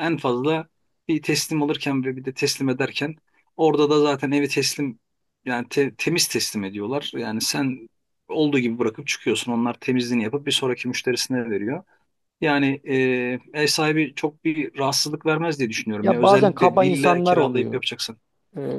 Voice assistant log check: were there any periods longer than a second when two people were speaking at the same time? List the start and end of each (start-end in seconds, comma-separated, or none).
16.0-17.8